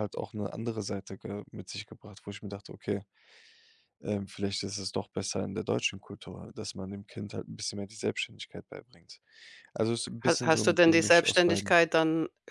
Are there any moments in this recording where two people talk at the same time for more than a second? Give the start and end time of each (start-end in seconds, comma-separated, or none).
10.2-11.8